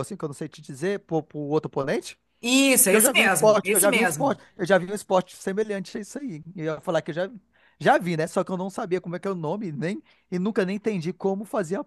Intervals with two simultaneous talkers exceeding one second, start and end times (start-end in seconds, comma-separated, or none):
2.8-4.4